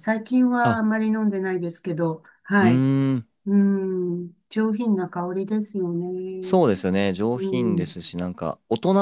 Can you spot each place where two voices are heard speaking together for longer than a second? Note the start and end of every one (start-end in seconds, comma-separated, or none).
none